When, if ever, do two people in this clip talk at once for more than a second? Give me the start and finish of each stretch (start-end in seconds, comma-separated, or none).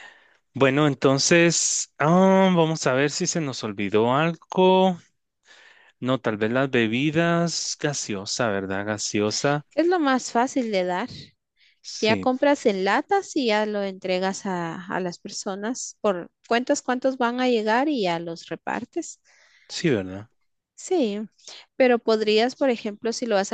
none